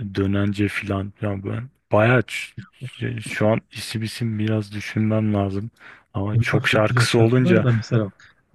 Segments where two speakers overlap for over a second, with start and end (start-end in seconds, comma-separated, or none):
6.3-7.7